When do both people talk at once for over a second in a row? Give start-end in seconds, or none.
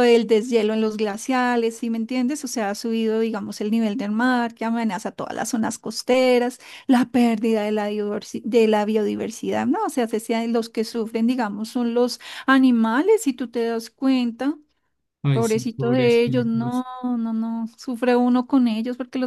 15.3-16.8